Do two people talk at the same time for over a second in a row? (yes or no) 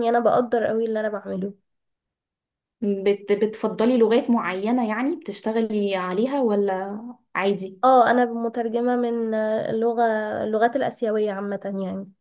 no